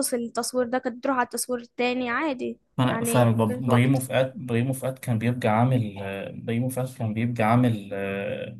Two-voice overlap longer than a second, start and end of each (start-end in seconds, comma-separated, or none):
2.8-4.0